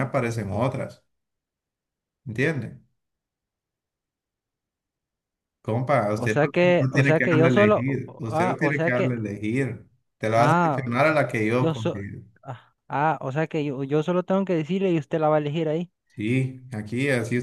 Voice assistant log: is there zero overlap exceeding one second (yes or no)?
no